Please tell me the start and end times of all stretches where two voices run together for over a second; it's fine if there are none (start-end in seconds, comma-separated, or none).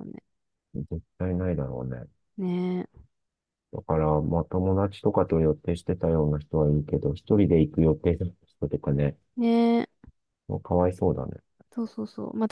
none